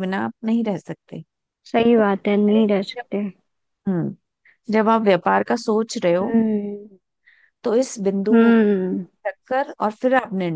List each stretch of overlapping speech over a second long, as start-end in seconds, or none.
1.8-3.2